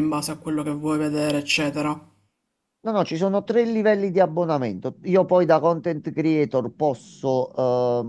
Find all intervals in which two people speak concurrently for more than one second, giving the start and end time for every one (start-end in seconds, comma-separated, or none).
none